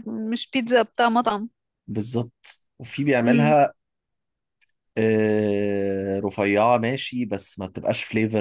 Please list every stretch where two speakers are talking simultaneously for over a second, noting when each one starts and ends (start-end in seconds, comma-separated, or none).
none